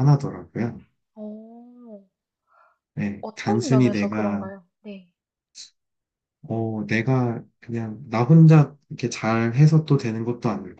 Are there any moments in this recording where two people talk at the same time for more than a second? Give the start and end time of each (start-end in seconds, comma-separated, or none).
3.2-4.5